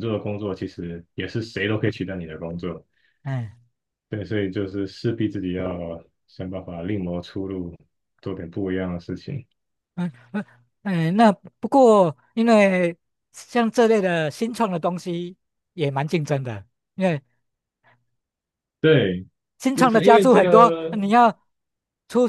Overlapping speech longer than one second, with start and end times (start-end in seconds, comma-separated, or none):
19.7-21.0